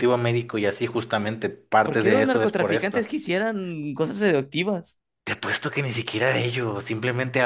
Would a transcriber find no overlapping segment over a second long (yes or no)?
no